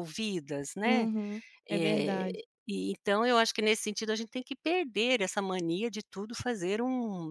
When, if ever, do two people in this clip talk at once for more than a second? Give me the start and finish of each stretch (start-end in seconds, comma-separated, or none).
none